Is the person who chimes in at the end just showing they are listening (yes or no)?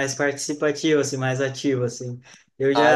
yes